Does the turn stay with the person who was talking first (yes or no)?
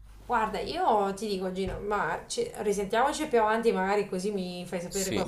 yes